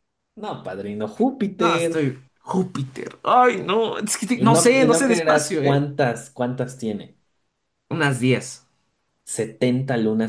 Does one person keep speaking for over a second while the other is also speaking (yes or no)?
yes